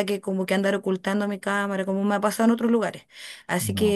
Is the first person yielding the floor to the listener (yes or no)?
no